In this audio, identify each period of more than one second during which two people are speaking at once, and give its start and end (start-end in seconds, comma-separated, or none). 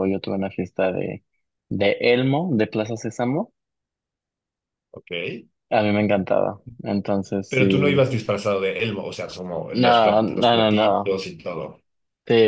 9.7-11.2